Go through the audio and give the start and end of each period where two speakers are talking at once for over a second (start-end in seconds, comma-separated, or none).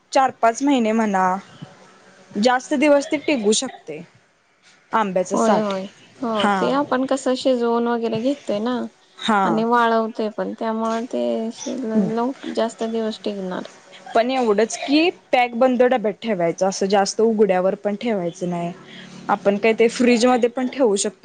none